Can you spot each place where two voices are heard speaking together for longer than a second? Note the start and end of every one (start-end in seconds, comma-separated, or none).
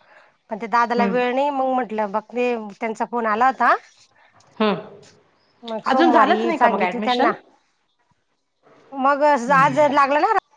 5.9-7.3